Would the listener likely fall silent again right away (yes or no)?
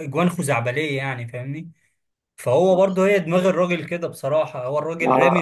yes